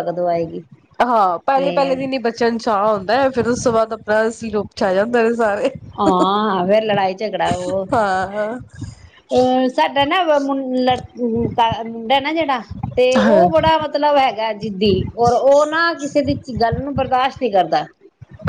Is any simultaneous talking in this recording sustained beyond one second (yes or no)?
no